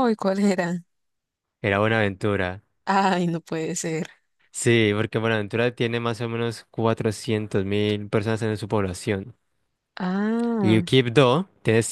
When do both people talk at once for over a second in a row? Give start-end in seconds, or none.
none